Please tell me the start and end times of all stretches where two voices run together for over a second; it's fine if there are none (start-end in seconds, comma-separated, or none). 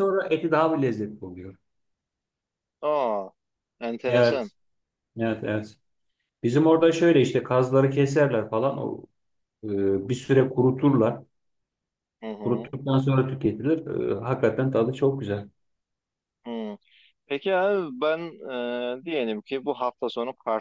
none